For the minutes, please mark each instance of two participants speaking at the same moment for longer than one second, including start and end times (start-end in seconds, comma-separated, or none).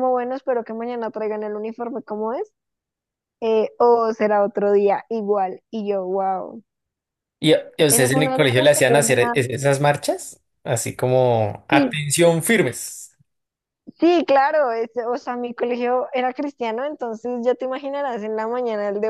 7.9-9.4